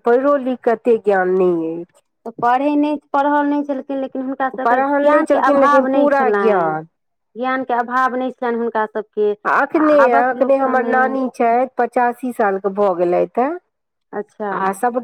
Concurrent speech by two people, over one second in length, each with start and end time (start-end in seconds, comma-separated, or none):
4.7-6.6